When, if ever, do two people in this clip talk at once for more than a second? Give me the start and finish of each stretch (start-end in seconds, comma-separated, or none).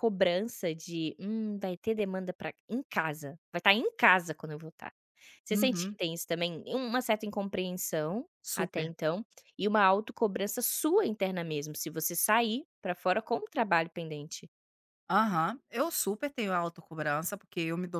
none